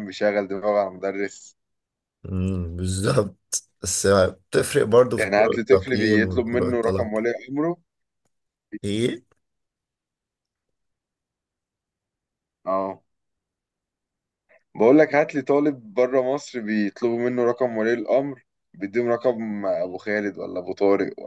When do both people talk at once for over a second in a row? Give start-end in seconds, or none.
5.2-7.1